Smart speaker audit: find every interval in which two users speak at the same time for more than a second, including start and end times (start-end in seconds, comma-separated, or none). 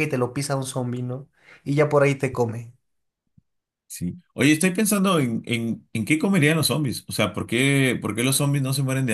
none